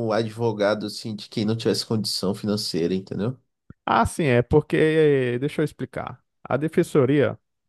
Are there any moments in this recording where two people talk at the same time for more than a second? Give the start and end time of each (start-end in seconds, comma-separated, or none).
none